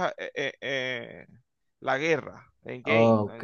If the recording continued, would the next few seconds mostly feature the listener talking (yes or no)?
yes